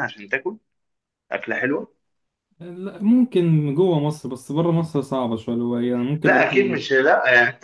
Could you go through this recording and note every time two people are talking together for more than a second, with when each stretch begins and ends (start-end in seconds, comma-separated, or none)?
none